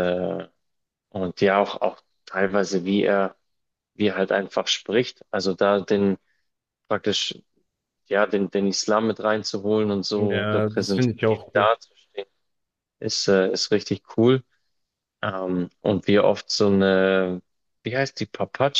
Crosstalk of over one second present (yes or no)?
yes